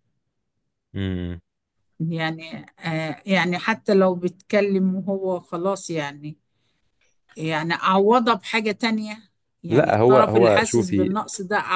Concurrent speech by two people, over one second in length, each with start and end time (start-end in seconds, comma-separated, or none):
9.7-11.2